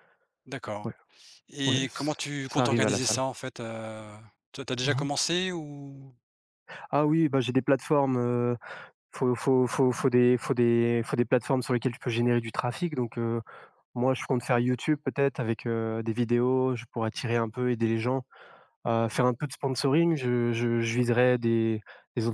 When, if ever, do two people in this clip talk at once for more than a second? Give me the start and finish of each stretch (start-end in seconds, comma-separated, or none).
1.6-3.2